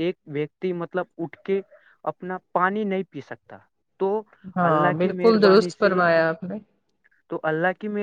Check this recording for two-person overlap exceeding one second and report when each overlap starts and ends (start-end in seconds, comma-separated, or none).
4.7-6.0